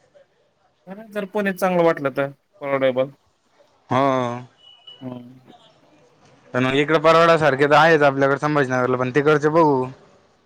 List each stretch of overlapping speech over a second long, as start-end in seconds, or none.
none